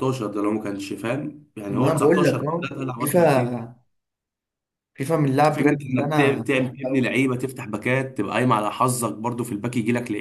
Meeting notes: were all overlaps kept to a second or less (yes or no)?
no